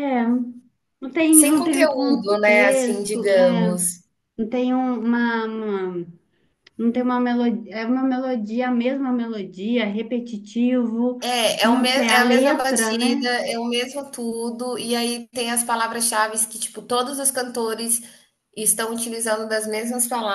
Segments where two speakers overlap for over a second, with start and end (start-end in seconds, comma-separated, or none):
1.3-3.8, 11.6-13.3